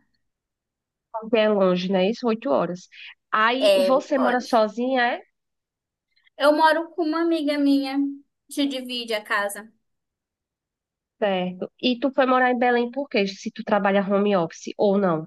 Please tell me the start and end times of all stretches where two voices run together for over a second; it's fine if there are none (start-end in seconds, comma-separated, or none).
none